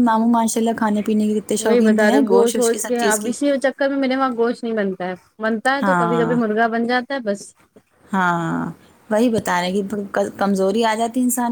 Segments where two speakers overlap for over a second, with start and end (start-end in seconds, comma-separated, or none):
1.7-3.3